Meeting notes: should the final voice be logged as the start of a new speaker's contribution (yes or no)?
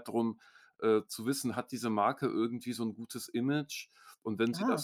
no